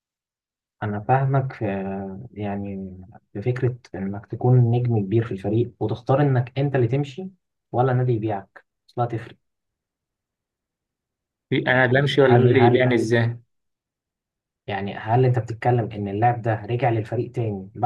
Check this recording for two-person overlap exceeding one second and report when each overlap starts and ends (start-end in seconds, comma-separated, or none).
11.6-12.9